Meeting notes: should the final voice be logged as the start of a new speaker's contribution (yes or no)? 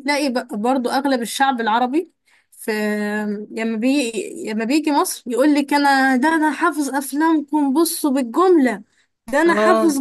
no